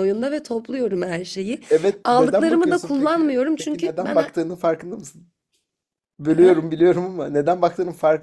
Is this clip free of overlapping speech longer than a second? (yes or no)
no